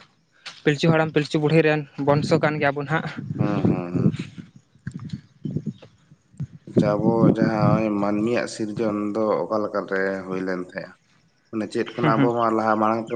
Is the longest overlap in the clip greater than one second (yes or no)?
no